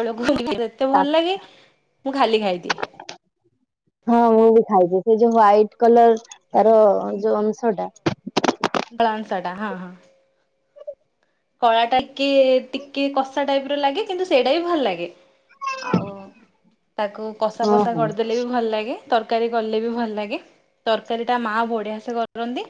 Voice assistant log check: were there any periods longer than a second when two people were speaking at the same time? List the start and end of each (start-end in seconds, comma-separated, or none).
none